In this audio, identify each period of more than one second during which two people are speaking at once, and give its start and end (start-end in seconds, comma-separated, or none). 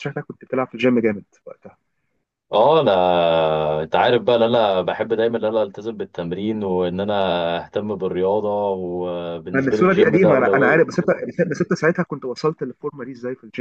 9.5-10.8